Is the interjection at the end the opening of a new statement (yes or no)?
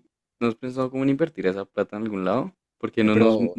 no